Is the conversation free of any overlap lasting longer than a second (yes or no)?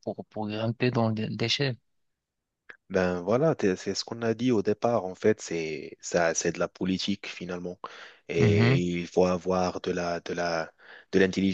yes